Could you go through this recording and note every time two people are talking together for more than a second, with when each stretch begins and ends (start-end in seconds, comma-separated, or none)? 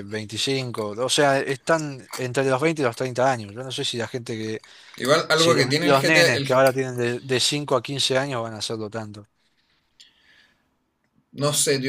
5.3-6.5